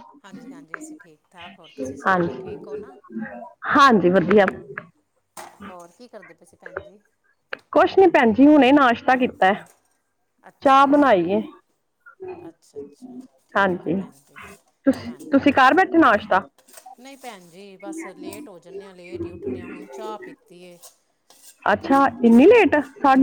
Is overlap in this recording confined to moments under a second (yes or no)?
yes